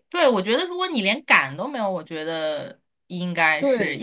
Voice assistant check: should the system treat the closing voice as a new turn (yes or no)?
no